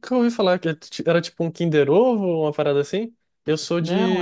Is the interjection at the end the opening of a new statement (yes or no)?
no